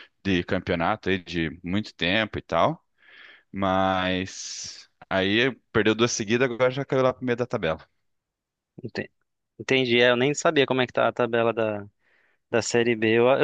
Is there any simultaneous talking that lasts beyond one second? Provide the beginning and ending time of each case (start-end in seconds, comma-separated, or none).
none